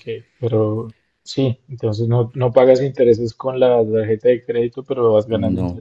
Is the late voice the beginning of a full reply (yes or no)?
no